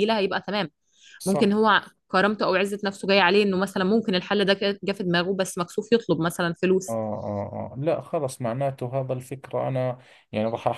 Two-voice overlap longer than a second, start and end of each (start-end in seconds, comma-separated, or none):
none